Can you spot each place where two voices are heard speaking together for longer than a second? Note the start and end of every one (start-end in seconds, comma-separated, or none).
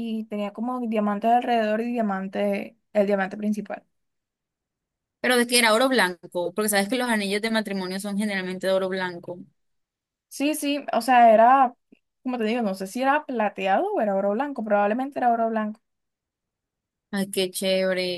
none